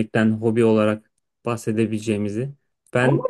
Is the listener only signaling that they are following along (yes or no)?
no